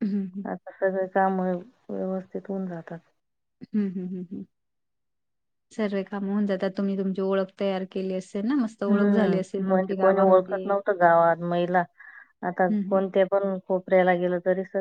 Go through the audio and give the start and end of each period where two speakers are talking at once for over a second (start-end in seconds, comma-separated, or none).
8.9-10.6